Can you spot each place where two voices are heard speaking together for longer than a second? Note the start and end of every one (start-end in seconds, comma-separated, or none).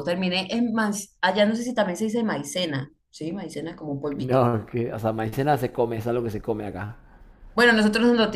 none